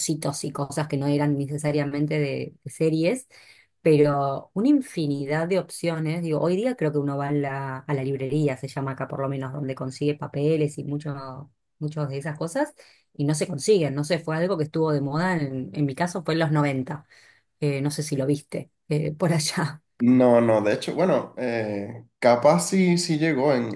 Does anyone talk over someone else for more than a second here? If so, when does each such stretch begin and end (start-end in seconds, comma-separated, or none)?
none